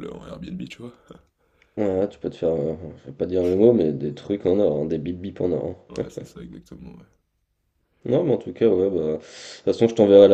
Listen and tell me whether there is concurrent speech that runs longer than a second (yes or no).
no